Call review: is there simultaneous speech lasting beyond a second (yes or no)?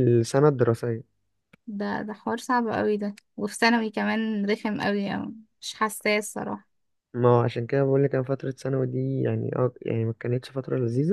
no